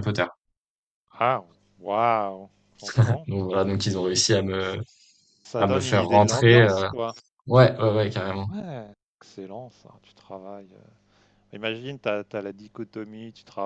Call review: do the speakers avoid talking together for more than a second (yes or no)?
no